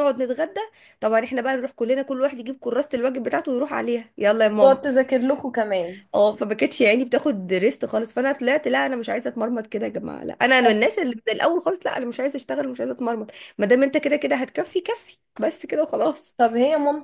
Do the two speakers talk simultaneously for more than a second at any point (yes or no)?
no